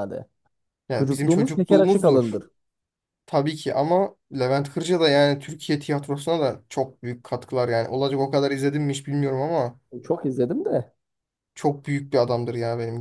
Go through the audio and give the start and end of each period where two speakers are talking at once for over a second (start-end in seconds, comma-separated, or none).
0.9-2.4